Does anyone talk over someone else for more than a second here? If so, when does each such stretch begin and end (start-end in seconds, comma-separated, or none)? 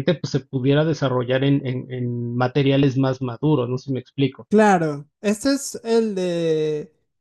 none